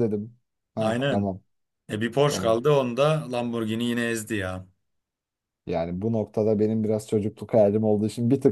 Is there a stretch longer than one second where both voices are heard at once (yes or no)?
no